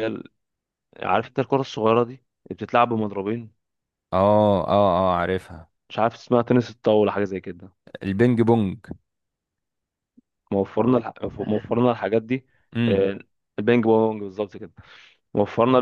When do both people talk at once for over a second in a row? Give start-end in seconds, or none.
none